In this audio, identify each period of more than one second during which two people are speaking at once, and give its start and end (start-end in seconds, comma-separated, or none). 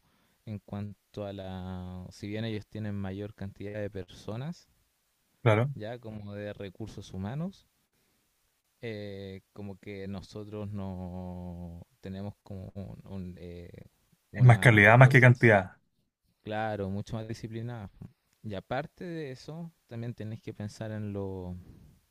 14.3-15.5